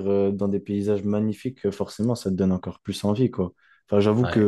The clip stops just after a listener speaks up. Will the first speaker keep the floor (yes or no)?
yes